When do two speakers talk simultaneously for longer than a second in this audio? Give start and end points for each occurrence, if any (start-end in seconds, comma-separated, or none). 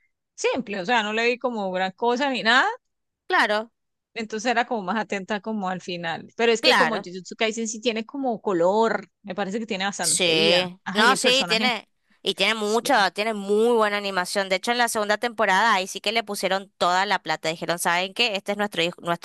10.0-11.7